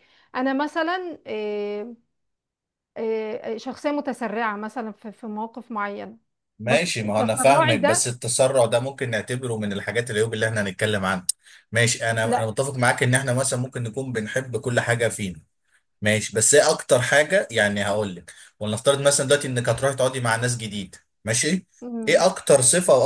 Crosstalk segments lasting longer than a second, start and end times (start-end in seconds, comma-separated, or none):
6.6-8.0